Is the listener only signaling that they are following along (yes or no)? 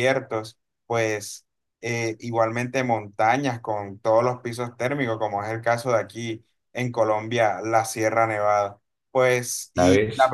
yes